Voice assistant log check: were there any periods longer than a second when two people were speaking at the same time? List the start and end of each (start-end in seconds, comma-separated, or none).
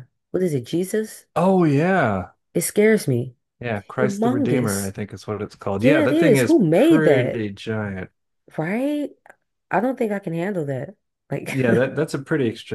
3.6-4.9, 5.8-7.4